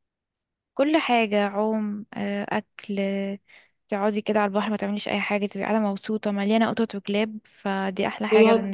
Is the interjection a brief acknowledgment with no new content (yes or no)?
no